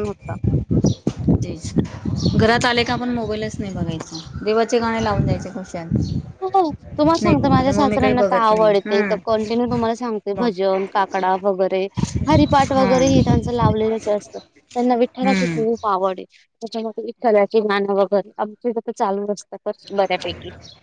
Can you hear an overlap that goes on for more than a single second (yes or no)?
yes